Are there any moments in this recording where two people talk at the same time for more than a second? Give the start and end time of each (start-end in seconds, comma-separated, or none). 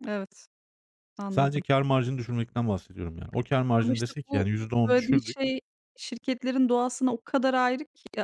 3.8-5.4